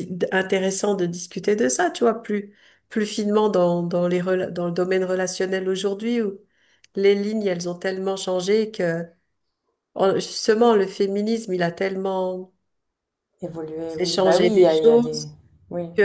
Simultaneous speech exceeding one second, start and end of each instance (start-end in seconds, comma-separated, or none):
13.9-15.3